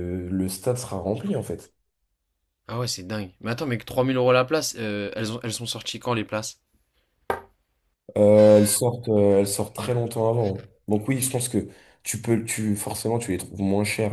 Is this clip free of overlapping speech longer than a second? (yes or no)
yes